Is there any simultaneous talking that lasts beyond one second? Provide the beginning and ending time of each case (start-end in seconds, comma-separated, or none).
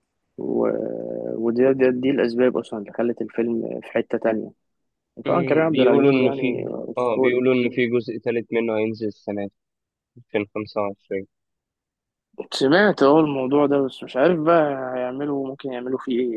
5.3-7.4